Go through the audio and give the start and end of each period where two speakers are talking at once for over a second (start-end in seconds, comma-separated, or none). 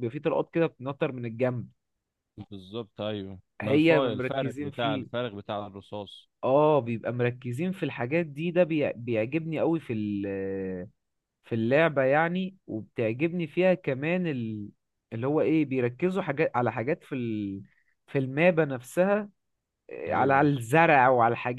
3.6-5.1